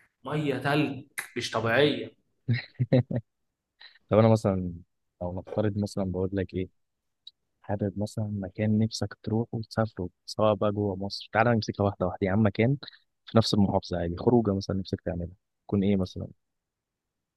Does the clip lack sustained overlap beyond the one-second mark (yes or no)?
yes